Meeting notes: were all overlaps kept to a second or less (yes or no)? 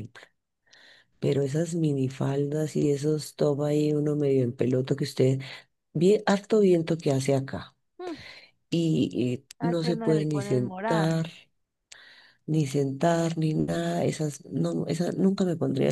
no